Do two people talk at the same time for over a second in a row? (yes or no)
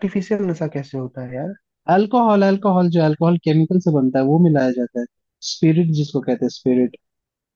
no